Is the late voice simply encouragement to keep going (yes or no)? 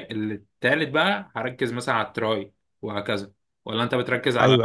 no